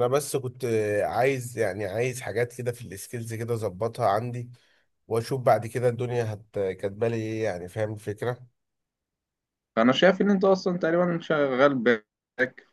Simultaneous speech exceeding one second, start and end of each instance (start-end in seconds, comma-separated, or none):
none